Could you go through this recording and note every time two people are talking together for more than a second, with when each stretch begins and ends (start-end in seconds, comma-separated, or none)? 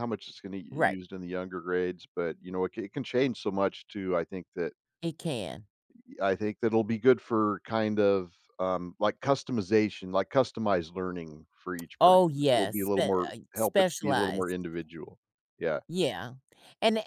12.0-14.6